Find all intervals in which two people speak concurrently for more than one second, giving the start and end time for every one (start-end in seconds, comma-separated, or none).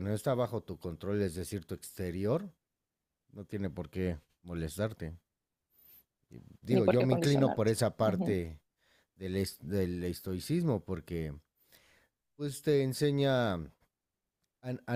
6.7-8.4